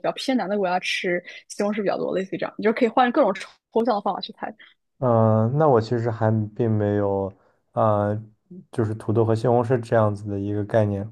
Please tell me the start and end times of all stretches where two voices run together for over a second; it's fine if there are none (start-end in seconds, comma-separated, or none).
none